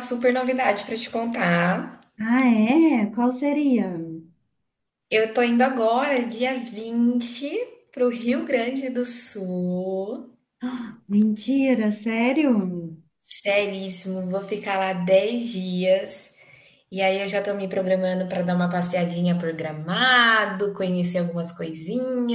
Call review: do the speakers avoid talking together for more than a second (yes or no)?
yes